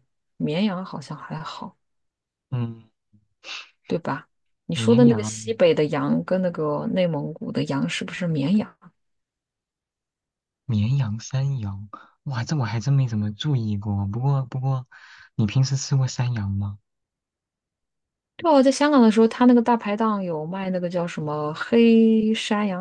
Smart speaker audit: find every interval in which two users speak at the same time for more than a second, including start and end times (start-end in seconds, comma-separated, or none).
none